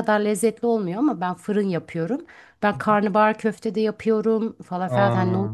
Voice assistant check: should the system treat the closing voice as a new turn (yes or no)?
no